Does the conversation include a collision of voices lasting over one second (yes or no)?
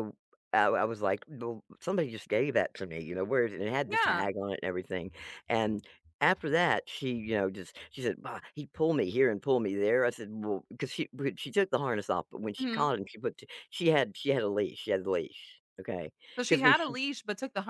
no